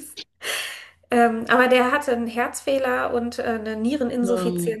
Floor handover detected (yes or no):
no